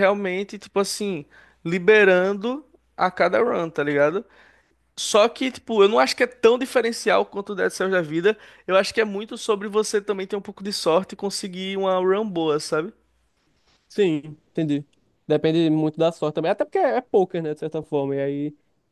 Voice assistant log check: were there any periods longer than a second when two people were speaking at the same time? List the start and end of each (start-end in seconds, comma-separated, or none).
none